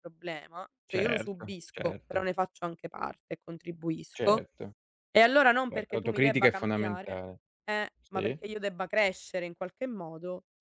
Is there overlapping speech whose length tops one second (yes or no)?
yes